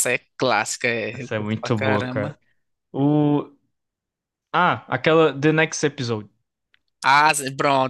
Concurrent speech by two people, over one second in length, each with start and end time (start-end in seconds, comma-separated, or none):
1.1-2.4